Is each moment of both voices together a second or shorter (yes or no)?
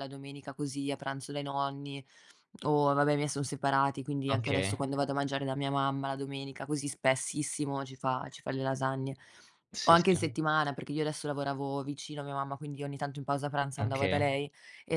yes